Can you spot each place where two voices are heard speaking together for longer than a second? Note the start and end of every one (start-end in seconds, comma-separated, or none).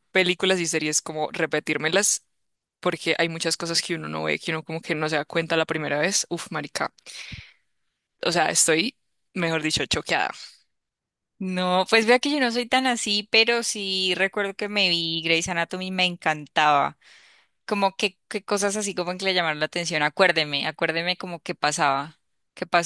none